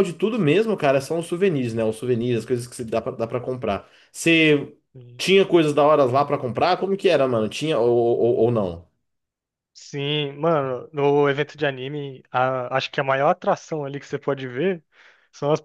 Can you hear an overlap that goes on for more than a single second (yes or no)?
no